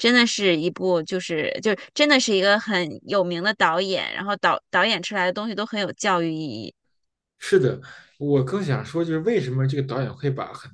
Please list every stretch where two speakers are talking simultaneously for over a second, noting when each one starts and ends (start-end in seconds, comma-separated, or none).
none